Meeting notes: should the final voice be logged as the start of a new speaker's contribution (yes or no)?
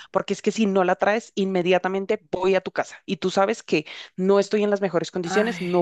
no